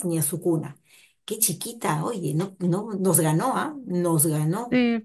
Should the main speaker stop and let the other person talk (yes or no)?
yes